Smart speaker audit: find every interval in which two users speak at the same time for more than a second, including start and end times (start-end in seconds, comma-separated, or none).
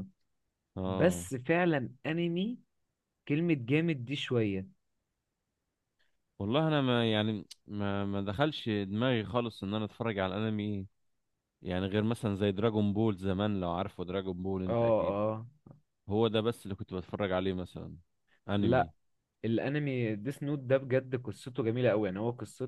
none